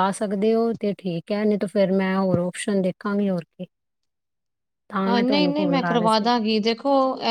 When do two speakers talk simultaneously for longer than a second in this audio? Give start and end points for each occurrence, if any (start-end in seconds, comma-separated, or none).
none